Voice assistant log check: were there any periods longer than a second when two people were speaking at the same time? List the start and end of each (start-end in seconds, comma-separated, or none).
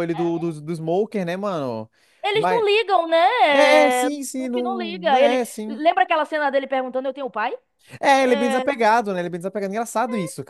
4.1-5.8